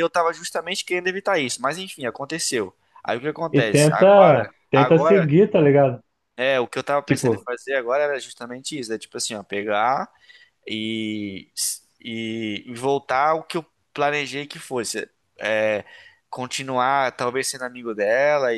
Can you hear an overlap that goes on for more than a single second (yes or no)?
yes